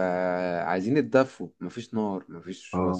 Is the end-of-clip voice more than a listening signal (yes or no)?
no